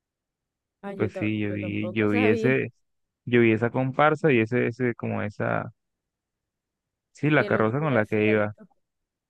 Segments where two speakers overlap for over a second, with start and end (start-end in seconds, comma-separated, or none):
1.0-2.6, 7.4-8.6